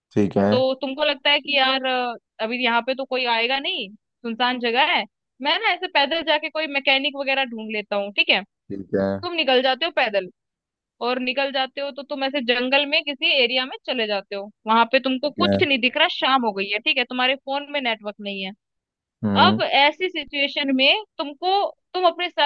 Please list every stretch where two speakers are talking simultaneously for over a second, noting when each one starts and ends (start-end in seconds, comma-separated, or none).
none